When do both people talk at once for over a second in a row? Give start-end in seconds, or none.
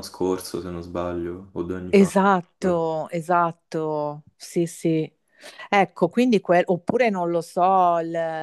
none